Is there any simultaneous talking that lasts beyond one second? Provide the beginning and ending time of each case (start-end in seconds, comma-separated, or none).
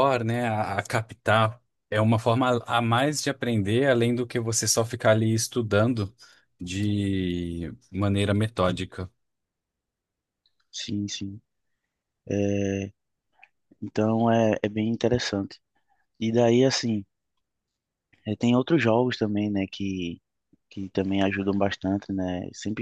none